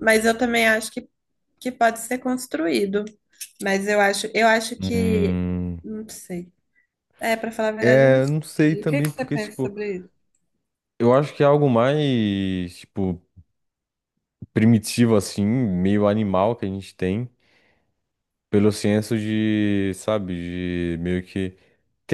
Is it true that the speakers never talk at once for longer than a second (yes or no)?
no